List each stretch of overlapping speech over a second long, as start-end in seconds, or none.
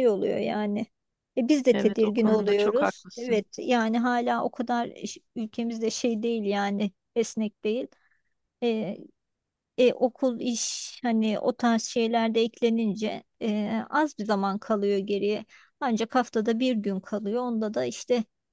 1.7-3.4